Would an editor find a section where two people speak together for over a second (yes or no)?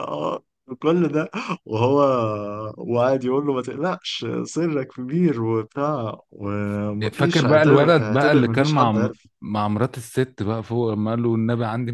yes